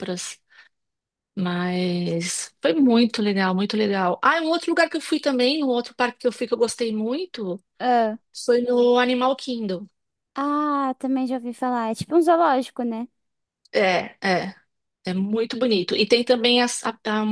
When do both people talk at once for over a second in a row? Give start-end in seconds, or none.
none